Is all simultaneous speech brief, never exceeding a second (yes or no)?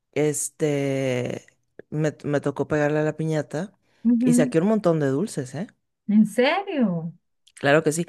yes